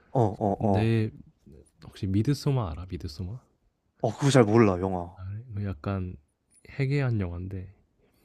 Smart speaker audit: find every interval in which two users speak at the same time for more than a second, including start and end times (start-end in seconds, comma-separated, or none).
none